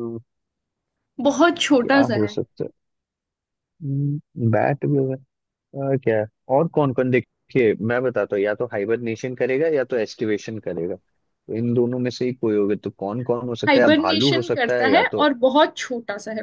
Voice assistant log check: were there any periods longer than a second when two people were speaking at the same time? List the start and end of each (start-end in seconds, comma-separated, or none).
13.7-15.3